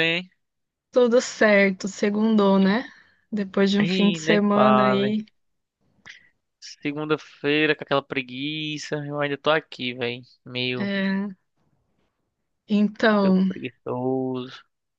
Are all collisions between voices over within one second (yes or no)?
no